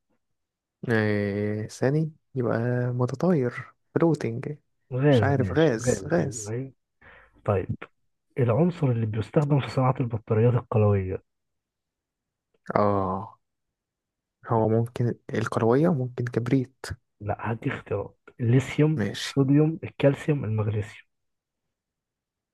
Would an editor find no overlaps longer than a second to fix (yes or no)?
no